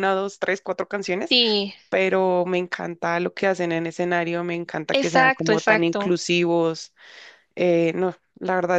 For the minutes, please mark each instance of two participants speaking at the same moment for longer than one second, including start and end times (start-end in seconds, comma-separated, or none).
4.9-6.2